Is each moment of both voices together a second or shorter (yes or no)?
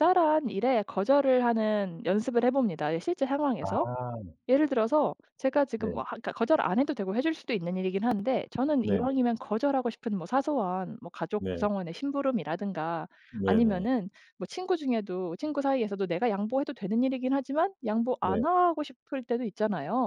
yes